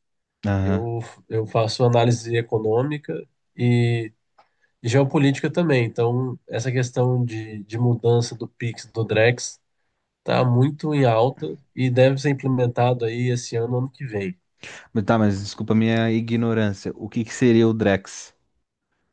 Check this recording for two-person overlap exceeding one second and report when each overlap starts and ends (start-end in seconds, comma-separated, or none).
none